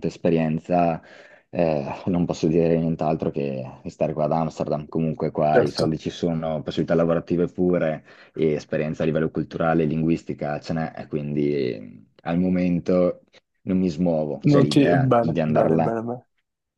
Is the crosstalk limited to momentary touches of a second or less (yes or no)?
no